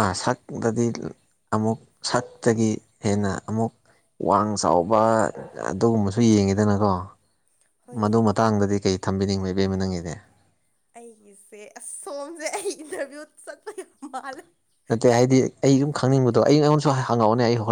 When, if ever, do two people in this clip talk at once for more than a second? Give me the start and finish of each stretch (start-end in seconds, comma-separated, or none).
none